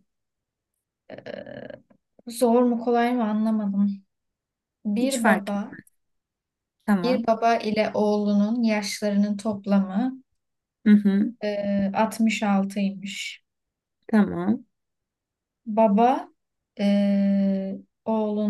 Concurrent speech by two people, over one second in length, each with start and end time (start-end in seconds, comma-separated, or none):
none